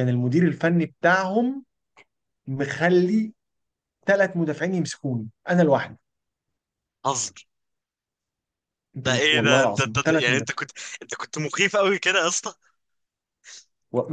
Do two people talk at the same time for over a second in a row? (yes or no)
yes